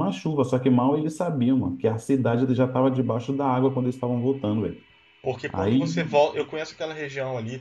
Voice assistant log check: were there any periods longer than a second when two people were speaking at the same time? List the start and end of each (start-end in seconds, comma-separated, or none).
none